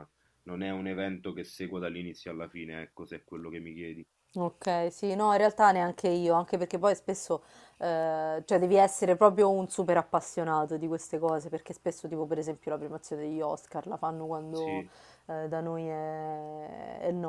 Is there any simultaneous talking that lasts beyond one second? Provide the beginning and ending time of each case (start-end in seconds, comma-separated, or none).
none